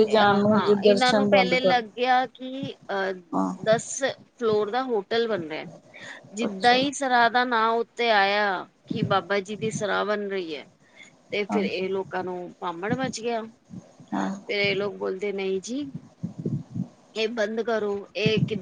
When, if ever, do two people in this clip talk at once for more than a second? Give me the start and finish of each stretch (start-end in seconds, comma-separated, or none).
0.5-1.8